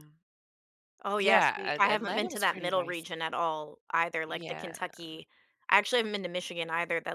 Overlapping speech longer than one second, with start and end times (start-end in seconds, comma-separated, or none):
1.2-3.1